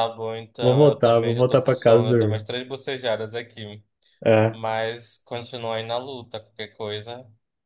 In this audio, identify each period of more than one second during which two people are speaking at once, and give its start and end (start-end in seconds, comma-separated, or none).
0.6-2.5